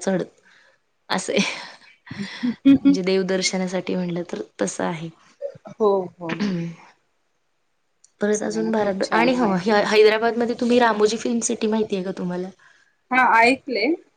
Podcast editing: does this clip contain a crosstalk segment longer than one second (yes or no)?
yes